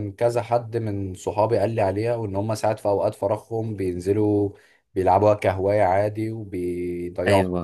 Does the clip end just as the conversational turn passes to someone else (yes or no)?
yes